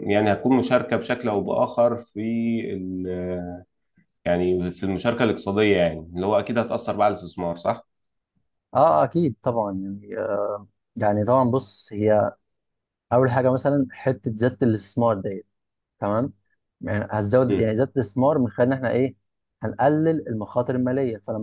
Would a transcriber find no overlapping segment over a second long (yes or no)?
yes